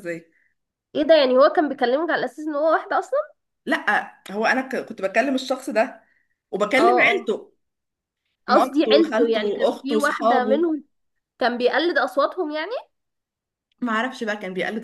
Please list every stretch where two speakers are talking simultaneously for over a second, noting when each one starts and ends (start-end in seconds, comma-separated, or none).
8.5-10.7